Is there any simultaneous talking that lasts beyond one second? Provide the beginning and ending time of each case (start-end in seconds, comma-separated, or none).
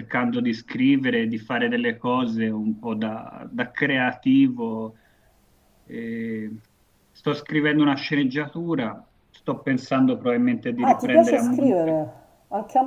10.8-12.0